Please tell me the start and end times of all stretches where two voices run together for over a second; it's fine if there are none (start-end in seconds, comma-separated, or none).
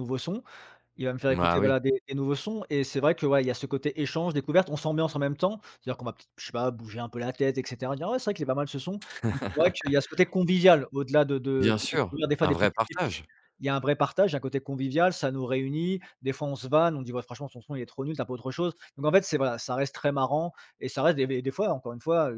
11.6-13.2